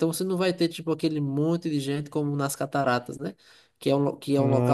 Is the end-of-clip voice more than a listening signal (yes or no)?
no